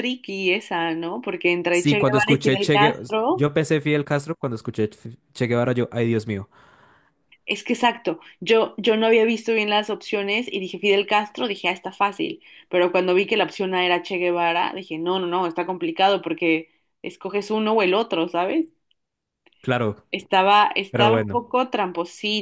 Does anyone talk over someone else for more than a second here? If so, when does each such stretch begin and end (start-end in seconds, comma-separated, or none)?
1.7-3.5